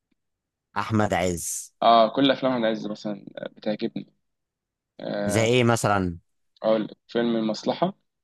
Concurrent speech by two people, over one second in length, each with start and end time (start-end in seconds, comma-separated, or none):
none